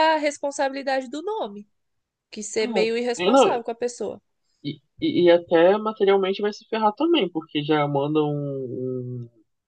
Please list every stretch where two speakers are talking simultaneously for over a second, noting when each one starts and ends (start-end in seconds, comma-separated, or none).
none